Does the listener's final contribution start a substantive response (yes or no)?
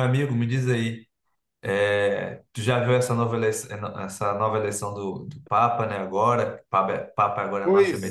yes